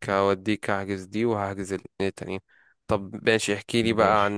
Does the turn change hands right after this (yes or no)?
no